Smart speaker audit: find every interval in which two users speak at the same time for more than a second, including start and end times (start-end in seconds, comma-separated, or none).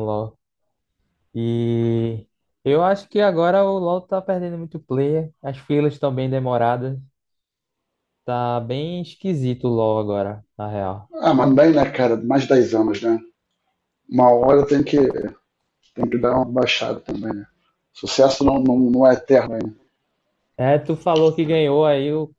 none